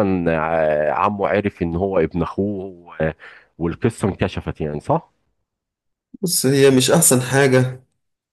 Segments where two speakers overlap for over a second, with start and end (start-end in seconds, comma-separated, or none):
none